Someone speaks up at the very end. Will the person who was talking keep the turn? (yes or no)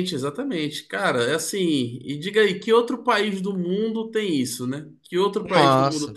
no